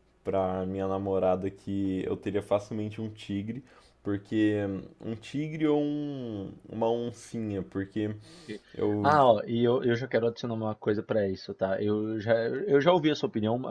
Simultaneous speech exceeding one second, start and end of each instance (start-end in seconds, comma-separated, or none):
none